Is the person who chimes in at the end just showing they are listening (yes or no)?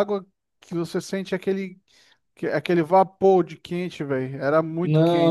no